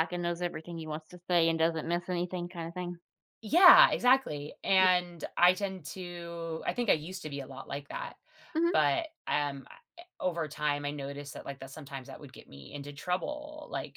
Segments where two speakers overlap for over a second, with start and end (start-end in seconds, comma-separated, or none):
none